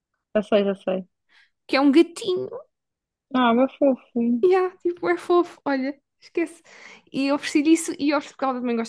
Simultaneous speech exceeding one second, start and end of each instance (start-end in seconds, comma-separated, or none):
none